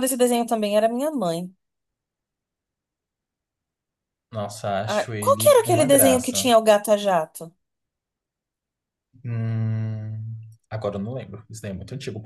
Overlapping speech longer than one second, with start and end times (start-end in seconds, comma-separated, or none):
4.9-6.5